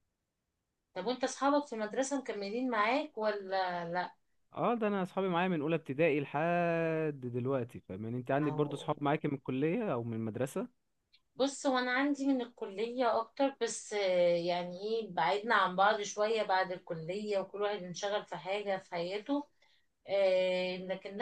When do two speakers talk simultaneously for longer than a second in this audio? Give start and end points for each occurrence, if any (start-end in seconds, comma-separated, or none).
none